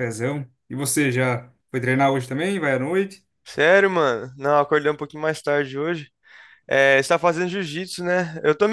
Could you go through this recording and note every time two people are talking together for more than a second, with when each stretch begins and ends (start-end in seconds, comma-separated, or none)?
none